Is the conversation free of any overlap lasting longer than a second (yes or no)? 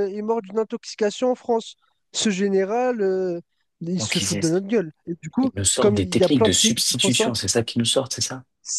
no